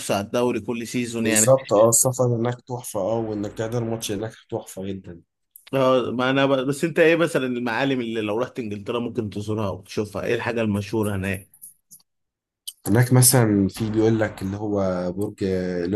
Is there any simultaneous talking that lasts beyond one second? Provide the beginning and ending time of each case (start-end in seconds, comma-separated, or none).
none